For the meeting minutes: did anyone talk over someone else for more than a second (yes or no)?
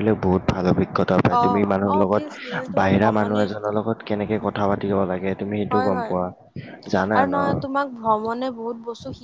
yes